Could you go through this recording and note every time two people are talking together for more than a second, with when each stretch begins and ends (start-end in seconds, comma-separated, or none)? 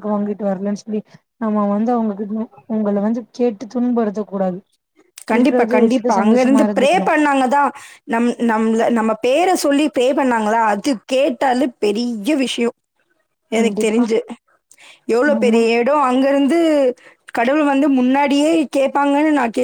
5.4-7.1